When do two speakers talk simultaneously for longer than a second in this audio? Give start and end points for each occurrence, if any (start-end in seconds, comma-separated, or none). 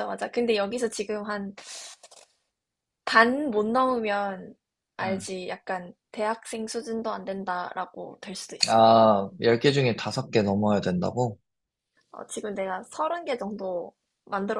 none